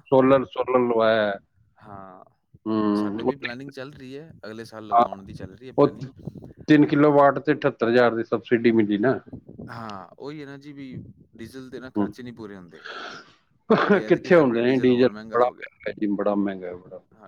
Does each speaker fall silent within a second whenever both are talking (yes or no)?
no